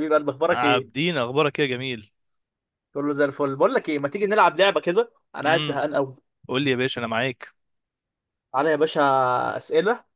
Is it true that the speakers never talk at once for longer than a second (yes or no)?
yes